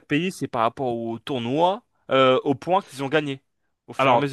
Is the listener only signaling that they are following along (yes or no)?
no